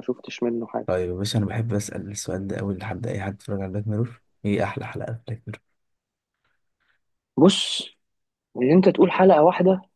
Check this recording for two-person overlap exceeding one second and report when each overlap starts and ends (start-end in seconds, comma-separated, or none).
none